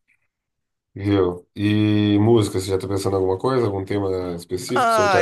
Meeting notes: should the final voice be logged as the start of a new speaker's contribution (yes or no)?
yes